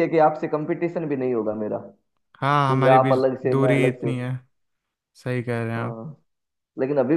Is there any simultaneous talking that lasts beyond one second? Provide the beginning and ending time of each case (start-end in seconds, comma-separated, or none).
2.5-4.1